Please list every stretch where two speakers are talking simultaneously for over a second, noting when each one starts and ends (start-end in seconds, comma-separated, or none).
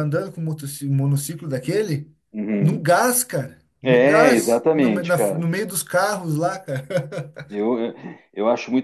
3.8-5.4